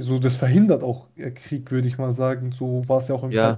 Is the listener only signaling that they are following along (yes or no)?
no